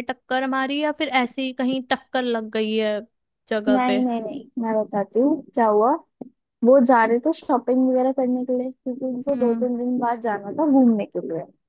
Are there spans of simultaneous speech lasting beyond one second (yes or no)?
no